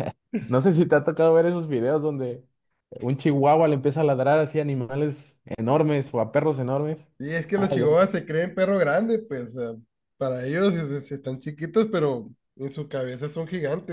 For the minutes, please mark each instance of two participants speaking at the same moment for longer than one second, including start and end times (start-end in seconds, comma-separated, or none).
none